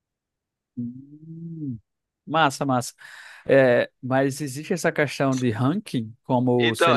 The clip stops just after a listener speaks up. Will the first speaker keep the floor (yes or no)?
no